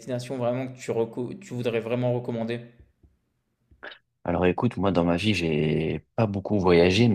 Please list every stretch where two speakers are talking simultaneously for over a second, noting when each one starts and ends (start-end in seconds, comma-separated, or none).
none